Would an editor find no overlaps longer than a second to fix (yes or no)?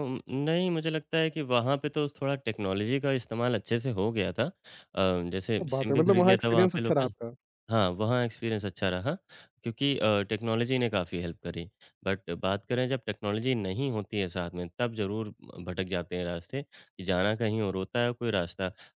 no